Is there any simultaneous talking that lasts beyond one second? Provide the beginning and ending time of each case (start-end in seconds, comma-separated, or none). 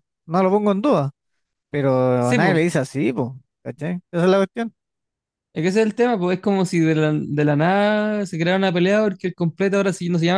none